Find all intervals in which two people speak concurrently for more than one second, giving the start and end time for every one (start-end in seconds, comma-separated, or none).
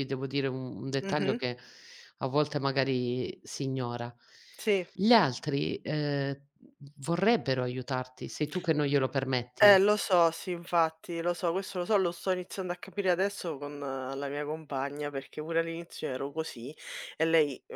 none